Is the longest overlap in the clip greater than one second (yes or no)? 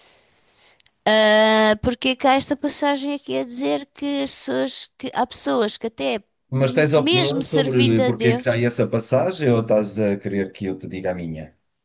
yes